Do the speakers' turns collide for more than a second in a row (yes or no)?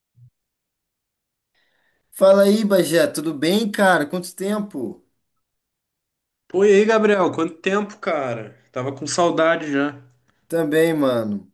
no